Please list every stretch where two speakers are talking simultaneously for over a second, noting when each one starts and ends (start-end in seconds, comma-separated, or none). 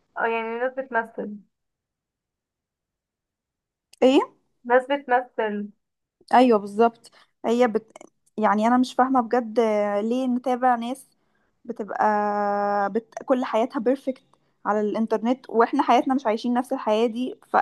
none